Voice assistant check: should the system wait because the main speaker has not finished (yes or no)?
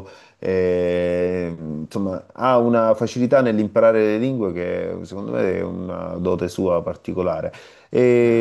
yes